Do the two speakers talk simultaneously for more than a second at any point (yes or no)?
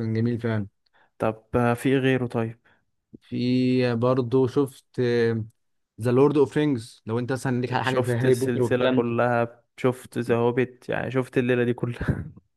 yes